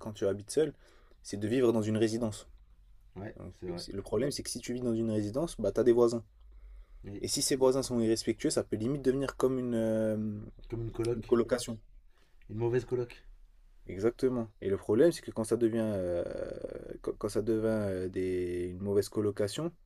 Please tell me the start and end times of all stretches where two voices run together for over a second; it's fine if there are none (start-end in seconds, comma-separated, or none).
none